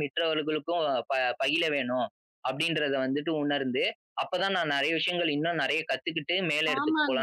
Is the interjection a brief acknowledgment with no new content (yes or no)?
no